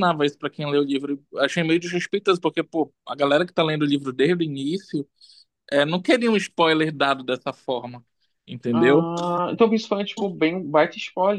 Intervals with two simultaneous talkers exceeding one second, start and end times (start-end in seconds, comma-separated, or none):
none